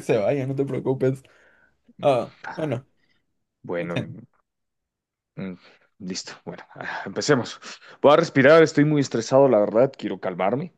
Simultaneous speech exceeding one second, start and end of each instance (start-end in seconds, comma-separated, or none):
none